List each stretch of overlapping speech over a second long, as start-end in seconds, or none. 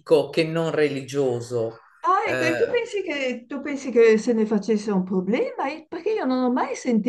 none